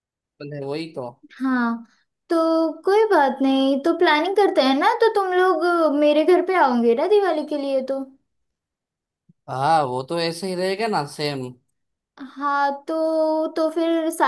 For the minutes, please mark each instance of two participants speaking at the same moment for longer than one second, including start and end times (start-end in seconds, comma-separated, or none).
none